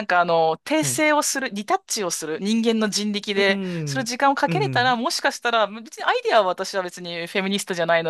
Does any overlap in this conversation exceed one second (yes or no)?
yes